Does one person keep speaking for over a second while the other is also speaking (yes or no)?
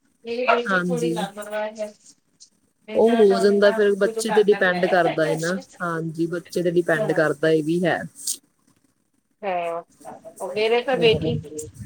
yes